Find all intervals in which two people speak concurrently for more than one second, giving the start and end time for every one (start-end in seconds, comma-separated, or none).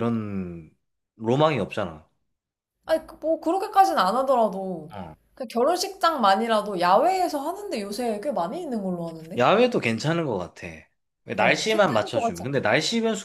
11.4-12.6